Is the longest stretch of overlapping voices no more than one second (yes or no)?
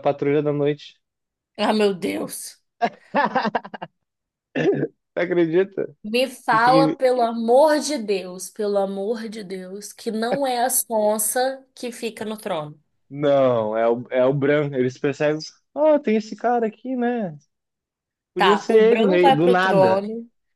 no